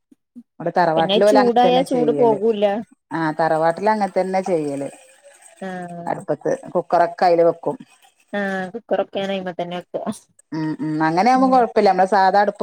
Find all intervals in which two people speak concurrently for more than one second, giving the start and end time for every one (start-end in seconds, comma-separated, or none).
1.0-2.4